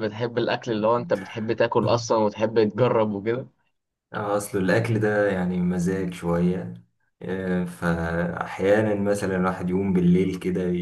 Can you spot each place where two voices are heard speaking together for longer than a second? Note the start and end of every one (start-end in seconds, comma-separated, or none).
none